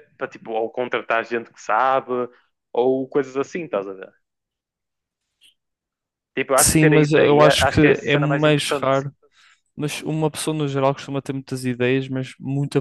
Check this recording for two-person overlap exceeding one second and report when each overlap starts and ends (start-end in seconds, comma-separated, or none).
6.6-8.9